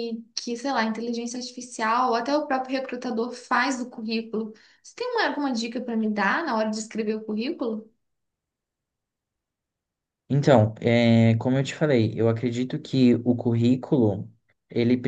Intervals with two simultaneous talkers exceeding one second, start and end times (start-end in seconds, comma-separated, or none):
none